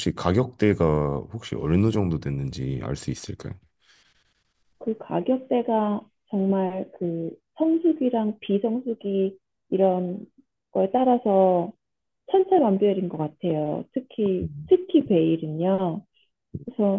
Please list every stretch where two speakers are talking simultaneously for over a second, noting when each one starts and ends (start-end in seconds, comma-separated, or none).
none